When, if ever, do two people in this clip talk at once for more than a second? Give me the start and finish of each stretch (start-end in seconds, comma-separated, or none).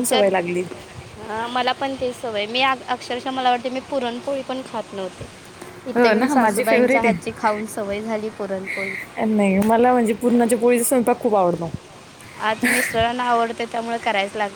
5.9-7.4